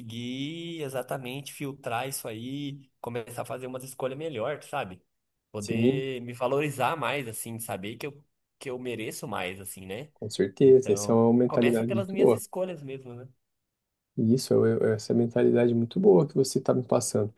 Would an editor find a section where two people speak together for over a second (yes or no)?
yes